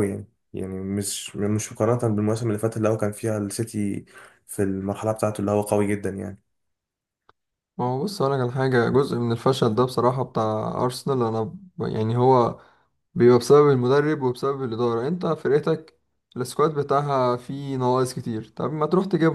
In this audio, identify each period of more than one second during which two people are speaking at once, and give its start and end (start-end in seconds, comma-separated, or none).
none